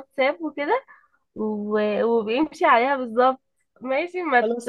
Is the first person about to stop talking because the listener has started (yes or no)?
yes